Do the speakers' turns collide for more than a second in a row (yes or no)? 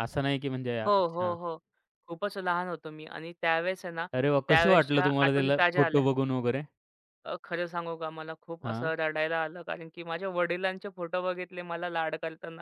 yes